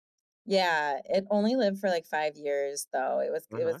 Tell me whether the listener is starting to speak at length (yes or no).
no